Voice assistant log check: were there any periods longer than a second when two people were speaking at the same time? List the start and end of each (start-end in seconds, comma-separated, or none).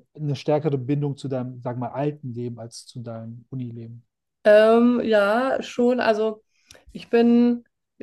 none